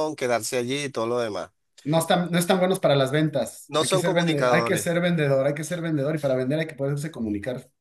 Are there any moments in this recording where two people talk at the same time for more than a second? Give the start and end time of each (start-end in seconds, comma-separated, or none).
3.6-4.9